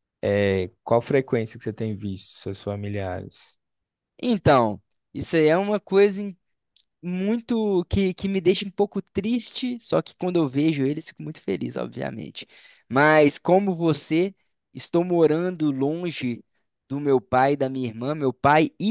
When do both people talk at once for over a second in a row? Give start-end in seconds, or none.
none